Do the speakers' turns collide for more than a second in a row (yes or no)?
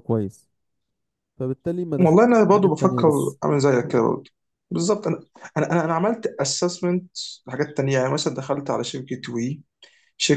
yes